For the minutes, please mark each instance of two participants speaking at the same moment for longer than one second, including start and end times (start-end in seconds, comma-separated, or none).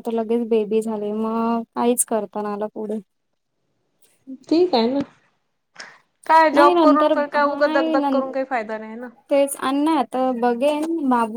6.5-8.2